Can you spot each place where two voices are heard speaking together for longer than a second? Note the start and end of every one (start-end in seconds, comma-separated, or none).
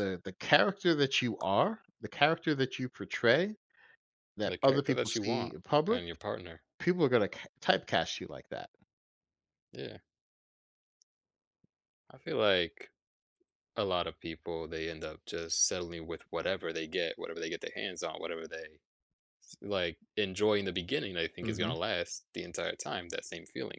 4.4-6.0